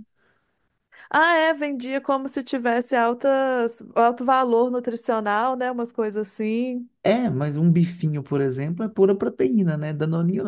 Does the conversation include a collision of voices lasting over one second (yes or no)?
no